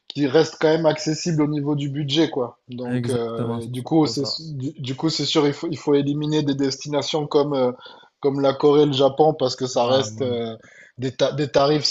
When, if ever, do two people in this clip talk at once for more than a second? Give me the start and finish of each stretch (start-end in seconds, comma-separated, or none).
2.9-4.4